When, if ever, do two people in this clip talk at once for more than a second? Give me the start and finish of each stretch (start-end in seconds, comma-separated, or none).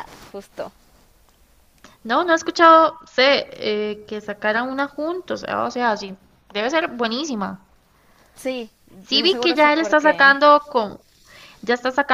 9.1-10.4